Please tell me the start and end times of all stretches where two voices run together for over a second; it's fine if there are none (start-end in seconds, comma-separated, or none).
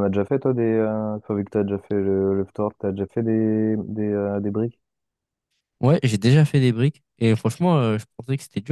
none